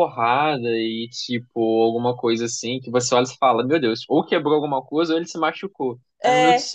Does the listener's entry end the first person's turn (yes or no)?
no